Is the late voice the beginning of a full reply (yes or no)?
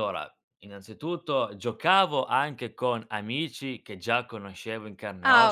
no